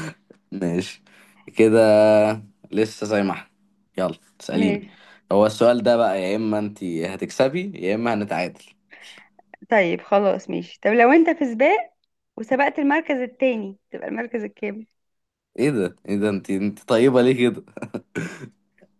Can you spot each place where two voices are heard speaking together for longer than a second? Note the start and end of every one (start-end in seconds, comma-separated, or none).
none